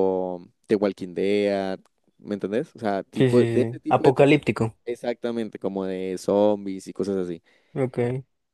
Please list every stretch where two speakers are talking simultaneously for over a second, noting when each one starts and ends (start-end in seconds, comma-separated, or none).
3.1-4.4